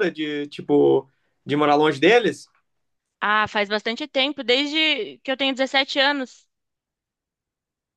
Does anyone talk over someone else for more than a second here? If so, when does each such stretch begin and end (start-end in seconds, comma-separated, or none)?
none